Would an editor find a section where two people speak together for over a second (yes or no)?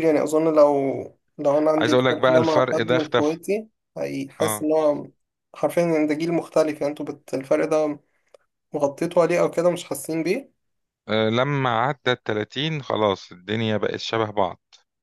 yes